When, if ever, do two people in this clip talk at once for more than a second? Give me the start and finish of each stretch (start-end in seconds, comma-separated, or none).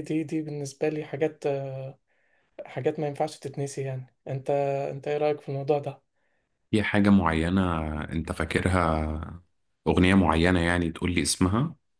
none